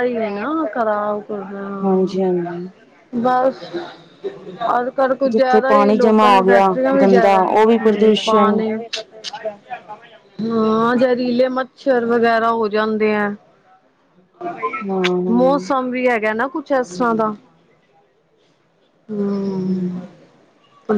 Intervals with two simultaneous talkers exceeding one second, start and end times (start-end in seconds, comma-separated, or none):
5.3-8.6